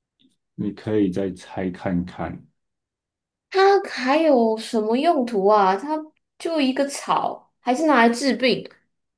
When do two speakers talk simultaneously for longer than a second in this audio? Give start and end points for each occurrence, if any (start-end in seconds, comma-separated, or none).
none